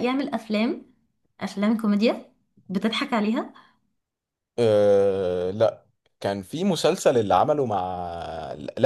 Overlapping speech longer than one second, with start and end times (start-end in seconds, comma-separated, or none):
none